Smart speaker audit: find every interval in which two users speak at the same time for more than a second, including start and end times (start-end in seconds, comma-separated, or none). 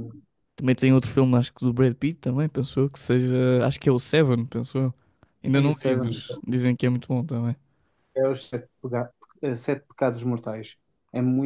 none